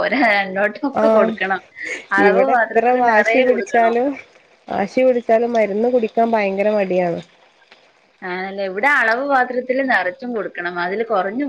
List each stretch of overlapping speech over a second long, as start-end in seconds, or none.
2.3-3.9